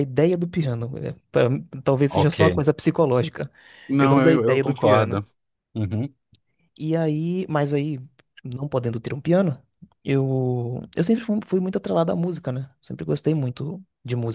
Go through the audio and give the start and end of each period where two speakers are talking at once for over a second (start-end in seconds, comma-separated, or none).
4.0-5.2